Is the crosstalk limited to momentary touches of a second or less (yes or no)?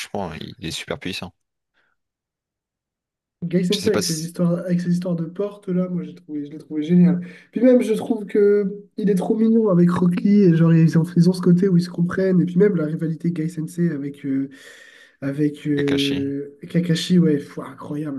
yes